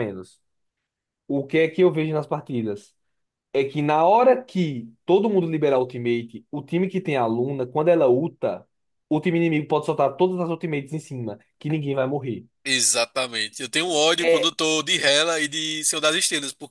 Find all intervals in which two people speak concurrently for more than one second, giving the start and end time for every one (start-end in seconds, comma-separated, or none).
none